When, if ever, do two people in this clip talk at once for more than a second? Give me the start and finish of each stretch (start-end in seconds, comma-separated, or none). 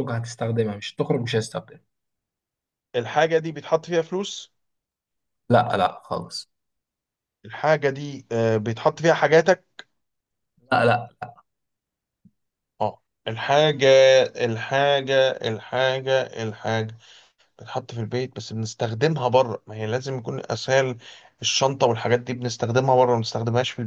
none